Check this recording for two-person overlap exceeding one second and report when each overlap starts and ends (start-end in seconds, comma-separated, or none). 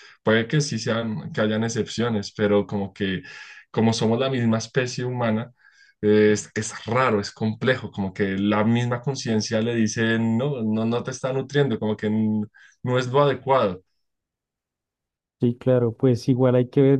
none